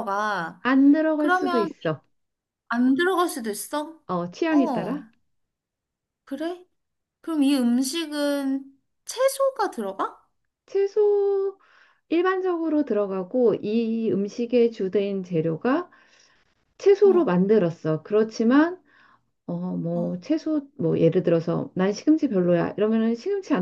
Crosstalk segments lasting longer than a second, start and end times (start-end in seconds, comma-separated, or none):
none